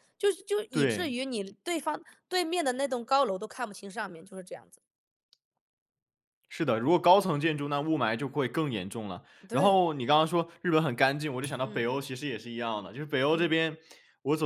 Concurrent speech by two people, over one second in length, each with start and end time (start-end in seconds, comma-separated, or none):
none